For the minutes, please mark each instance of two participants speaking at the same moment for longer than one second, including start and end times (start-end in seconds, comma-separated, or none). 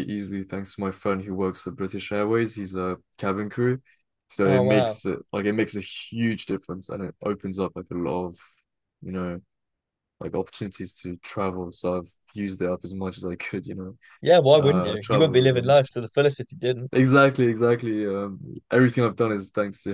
14.6-15.8